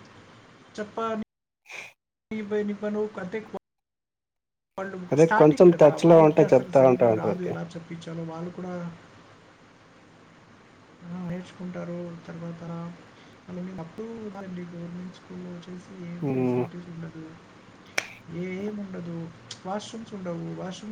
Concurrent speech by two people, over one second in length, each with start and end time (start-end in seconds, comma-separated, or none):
5.1-7.5